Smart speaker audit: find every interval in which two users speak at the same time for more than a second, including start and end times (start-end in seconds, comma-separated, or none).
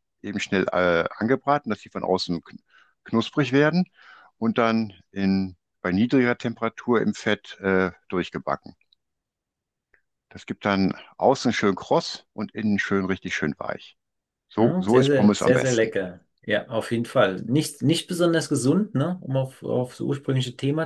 14.6-15.9